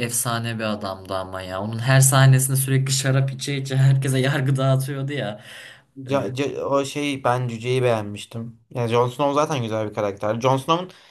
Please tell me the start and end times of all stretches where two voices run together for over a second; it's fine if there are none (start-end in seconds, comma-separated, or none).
none